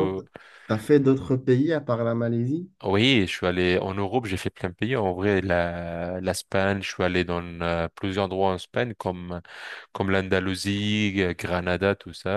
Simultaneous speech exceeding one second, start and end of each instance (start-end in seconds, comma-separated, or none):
none